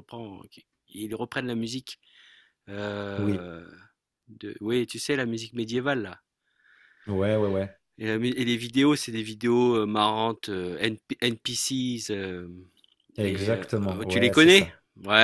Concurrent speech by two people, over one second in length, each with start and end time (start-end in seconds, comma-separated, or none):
13.2-14.7